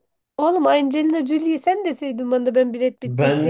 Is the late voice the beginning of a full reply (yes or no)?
yes